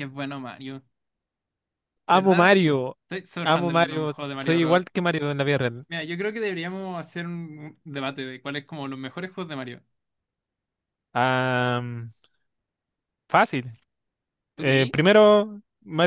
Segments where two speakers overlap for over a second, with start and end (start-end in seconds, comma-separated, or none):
3.4-4.8